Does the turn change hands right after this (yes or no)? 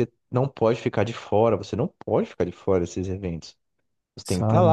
no